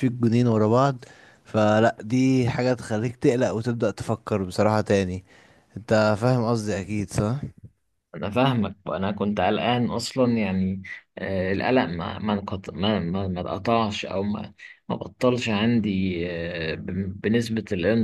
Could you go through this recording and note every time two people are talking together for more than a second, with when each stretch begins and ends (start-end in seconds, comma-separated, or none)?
none